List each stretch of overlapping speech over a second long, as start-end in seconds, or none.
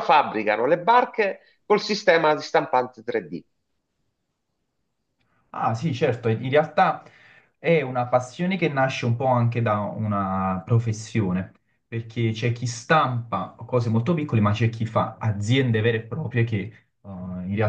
none